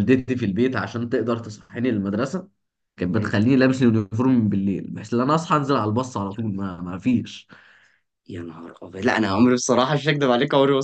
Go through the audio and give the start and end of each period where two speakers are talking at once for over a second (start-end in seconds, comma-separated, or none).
none